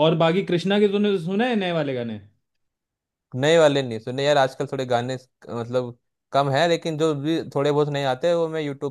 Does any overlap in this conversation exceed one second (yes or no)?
no